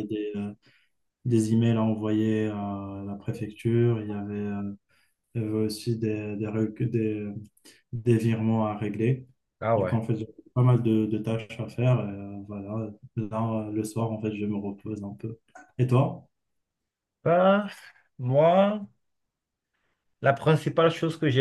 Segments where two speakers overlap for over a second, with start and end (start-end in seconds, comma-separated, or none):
none